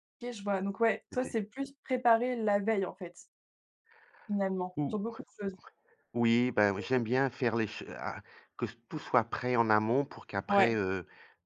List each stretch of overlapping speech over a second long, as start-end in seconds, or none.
none